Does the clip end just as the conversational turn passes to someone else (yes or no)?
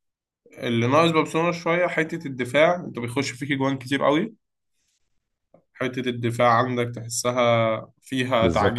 yes